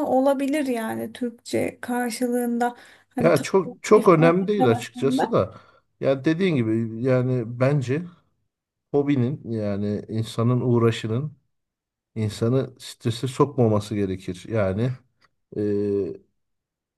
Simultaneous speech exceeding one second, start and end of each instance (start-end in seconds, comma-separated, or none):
3.2-5.2